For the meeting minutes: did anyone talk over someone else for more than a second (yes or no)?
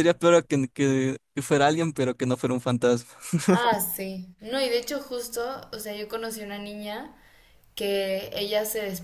no